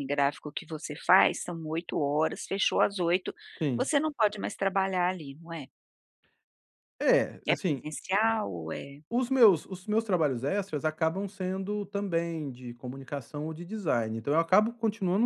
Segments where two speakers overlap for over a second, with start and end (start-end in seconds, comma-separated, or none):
none